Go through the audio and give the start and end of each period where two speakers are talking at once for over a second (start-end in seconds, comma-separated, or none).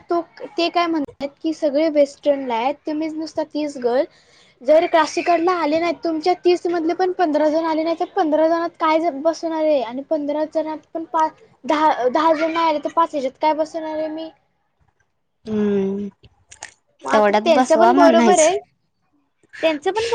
17.1-18.5